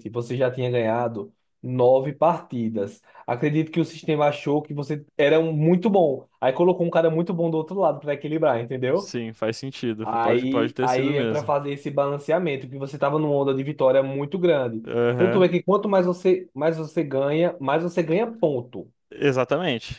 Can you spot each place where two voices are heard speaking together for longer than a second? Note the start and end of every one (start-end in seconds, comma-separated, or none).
10.0-11.5